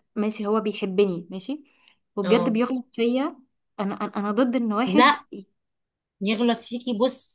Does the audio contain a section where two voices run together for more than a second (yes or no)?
no